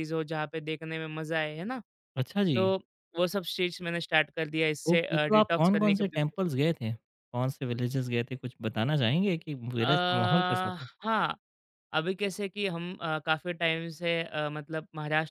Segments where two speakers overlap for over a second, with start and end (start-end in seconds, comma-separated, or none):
4.9-6.4